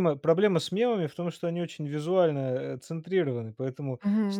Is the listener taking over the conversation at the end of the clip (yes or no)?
yes